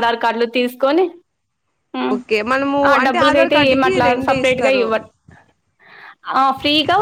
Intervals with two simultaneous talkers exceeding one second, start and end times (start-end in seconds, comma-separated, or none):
2.9-4.9